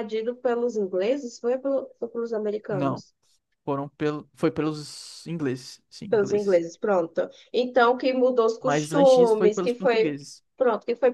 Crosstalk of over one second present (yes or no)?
yes